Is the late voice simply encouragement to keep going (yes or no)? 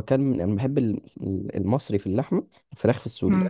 no